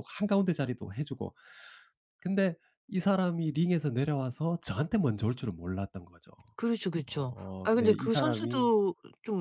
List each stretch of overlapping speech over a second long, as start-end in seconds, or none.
7.1-8.7